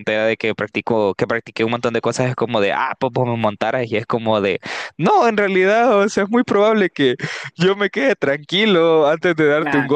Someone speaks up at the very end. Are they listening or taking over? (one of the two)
listening